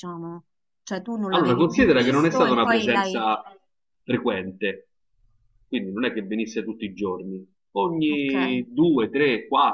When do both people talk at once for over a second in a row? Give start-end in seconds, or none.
1.3-3.2